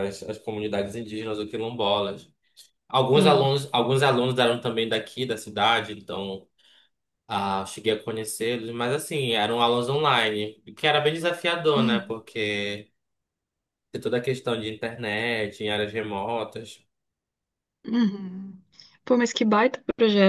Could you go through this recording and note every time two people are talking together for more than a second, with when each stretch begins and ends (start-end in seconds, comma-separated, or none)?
none